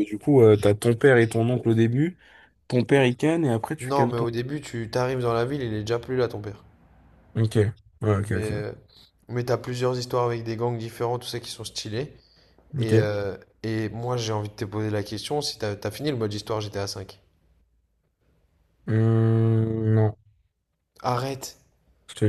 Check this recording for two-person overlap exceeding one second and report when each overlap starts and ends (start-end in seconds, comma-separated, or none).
none